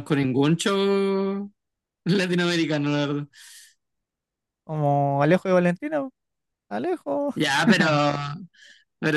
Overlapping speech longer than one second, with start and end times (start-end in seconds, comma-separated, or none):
none